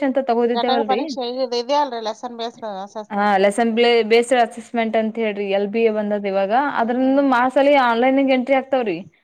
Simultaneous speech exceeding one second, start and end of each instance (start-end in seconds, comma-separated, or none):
none